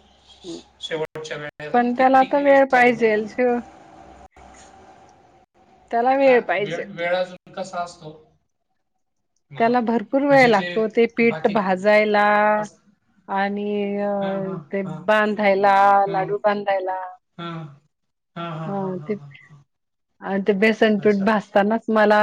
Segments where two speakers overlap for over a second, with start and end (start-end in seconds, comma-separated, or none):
1.7-3.3